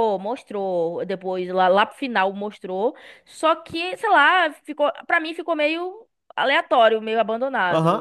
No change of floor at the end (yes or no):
no